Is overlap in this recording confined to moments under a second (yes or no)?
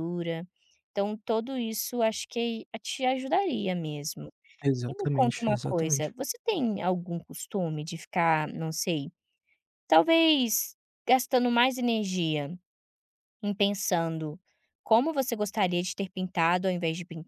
no